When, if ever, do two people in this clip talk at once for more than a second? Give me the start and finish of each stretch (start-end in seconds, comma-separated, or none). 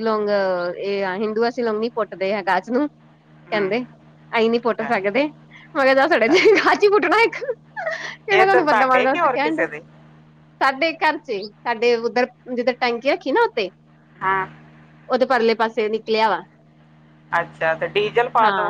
8.3-9.7